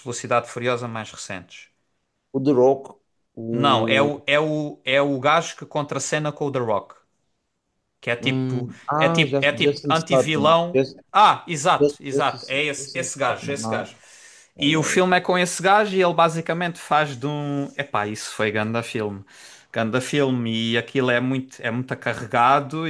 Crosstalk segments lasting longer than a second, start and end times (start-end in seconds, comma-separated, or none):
8.2-10.9, 11.8-13.9